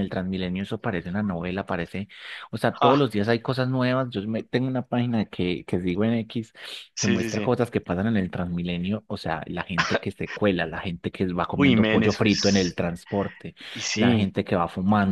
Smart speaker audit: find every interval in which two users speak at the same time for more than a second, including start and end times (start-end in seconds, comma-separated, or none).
11.5-12.8